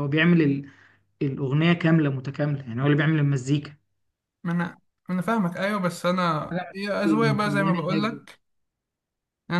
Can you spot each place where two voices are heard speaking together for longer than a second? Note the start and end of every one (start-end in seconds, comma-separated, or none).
6.5-8.2